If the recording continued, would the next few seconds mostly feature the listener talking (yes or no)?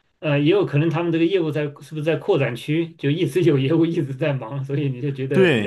yes